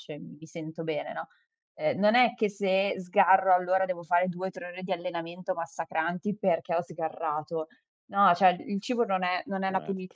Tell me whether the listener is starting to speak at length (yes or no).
no